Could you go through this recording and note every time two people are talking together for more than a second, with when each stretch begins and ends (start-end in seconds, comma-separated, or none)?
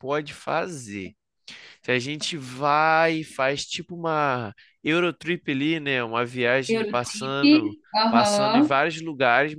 6.7-8.8